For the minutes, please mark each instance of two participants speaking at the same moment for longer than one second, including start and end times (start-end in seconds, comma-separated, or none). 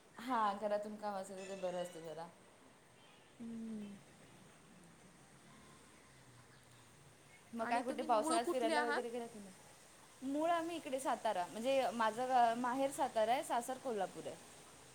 7.6-9.2